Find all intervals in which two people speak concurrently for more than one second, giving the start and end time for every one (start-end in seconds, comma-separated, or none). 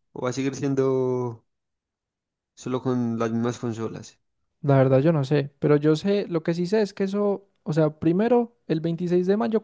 none